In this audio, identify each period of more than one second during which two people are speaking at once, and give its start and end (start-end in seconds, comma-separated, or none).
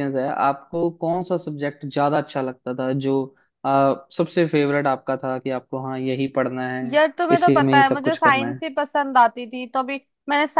6.9-8.6